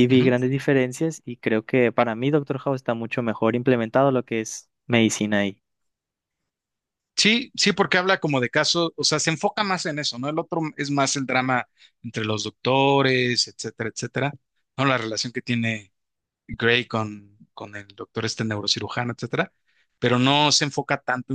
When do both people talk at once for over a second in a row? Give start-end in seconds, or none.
none